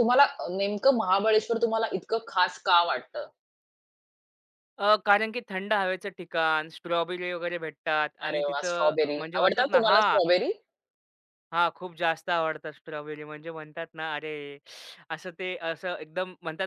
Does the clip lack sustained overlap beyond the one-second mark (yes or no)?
no